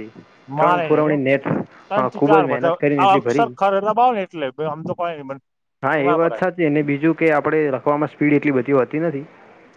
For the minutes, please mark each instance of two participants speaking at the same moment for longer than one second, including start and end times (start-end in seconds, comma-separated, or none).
1.9-3.5